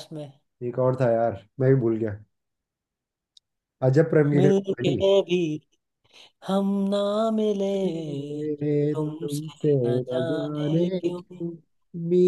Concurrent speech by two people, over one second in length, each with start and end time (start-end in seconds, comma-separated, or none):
9.2-11.2